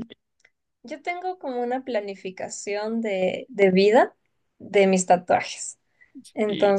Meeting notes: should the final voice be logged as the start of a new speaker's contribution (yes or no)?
no